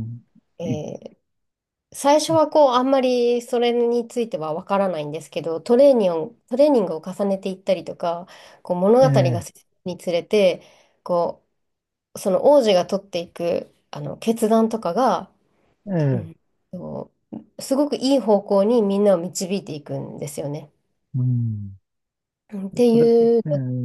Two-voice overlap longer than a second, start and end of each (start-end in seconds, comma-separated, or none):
none